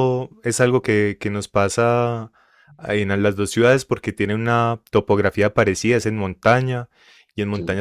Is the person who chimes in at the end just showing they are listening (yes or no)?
yes